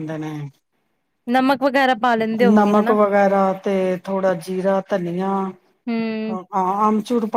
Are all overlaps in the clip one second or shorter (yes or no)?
yes